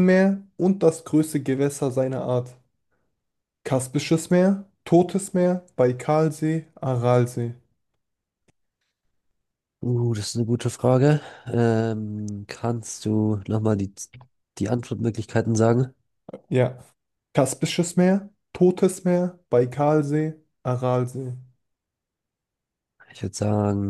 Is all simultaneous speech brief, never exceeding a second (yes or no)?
yes